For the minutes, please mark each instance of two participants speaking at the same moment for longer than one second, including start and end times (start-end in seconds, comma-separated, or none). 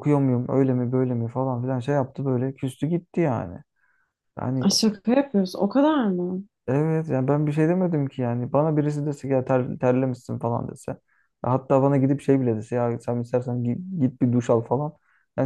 none